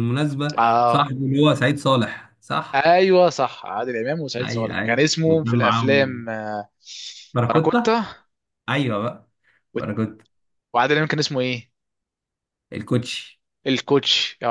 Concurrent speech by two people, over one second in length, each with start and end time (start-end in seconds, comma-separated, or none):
4.4-6.3